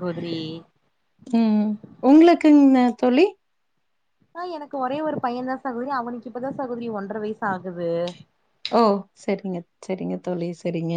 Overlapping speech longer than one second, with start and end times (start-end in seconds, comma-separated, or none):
none